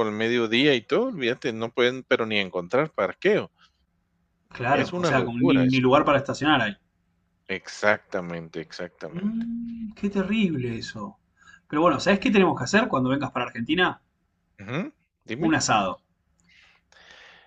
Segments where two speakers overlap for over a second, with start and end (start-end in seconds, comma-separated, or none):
4.7-6.0